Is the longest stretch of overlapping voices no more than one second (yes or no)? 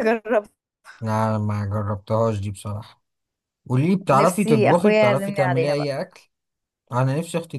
no